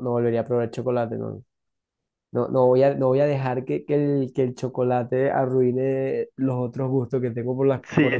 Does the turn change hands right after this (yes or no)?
yes